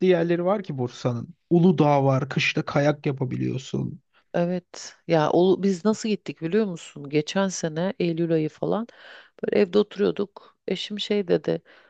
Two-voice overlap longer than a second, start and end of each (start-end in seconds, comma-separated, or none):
none